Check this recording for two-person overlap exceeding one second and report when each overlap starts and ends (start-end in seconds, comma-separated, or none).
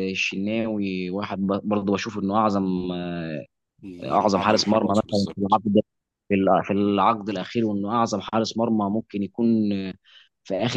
4.0-5.6